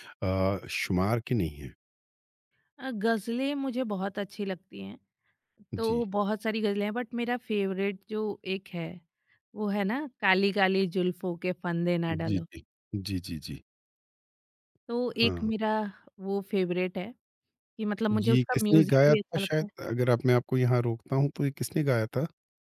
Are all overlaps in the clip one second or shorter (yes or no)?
no